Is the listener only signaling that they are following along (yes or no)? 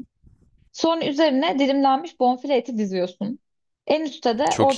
yes